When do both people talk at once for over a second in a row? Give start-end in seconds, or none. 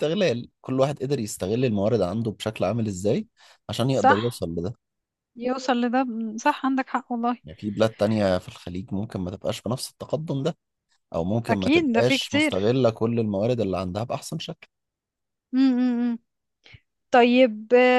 11.5-12.7